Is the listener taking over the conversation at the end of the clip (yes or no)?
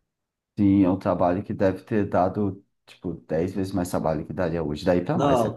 yes